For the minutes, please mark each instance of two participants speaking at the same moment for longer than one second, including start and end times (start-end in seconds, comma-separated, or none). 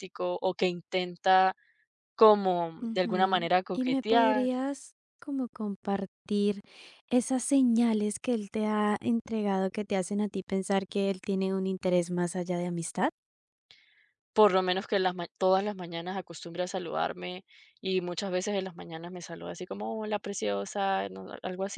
2.8-4.5